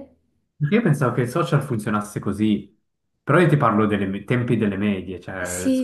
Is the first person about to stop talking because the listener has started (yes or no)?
yes